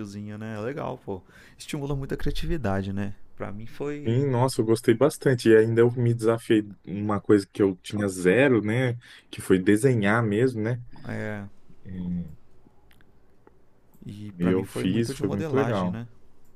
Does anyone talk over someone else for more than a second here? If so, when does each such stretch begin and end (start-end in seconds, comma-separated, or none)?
14.4-16.0